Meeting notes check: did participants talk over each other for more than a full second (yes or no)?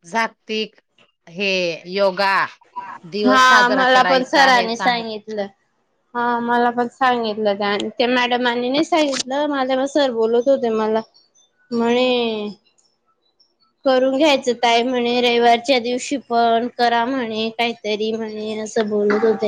yes